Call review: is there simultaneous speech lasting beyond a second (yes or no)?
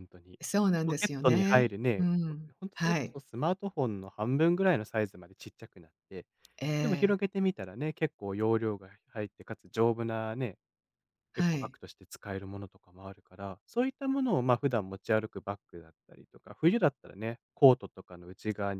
yes